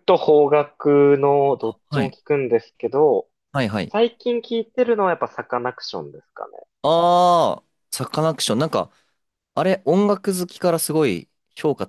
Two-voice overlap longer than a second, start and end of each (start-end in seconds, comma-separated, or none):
none